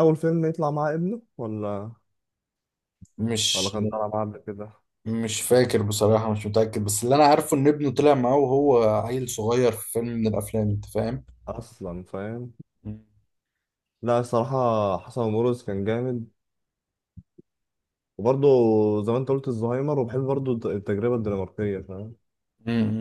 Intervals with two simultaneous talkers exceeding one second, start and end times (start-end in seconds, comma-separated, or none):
none